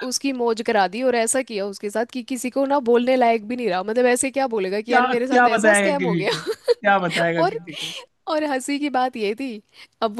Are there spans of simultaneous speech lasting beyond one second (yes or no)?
yes